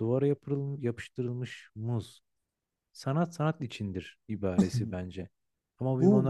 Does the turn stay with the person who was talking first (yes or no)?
no